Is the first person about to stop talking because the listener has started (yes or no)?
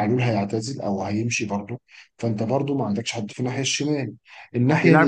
no